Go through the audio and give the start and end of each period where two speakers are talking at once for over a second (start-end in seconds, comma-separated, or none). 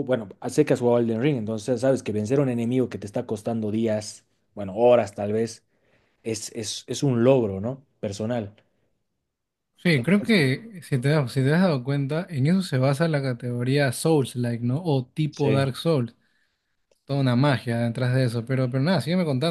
none